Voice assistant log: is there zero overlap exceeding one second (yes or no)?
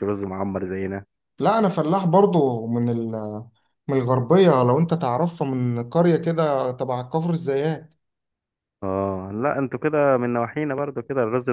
yes